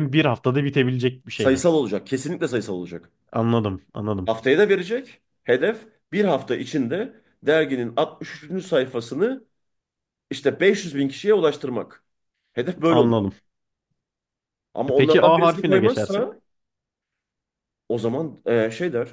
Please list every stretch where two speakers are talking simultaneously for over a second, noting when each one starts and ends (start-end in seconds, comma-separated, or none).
14.9-16.3